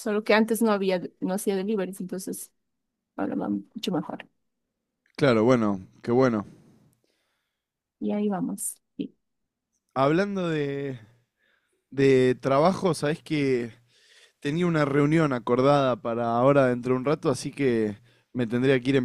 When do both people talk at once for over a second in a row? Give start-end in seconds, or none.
none